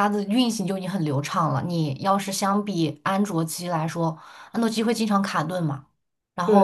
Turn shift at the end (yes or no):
yes